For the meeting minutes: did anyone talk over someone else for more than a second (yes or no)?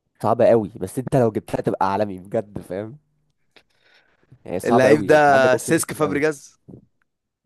yes